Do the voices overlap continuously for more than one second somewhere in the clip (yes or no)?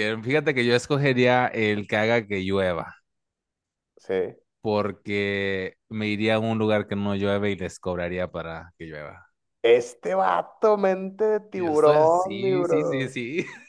yes